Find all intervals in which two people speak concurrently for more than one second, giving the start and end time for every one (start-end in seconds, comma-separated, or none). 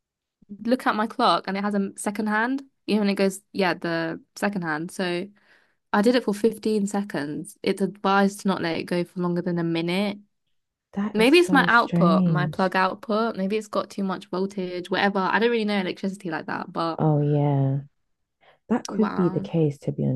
11.1-12.7